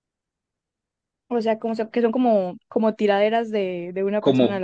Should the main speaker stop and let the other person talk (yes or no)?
yes